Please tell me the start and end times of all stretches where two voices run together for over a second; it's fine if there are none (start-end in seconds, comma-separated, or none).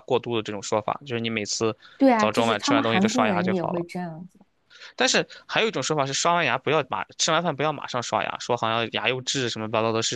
2.1-3.9